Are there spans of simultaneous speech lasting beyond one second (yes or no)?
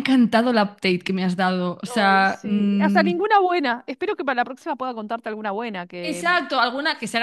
yes